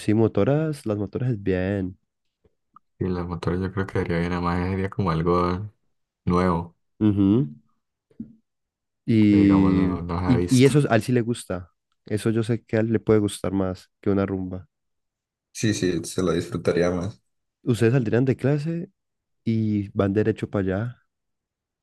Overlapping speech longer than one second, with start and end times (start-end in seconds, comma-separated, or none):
9.2-10.7